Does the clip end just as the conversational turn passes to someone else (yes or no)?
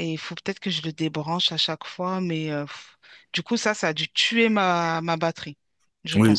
yes